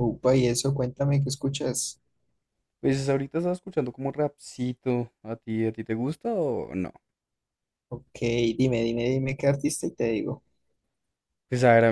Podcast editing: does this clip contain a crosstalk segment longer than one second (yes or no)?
no